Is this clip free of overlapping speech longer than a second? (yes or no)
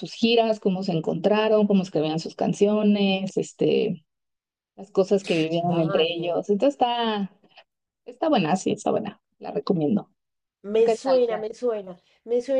yes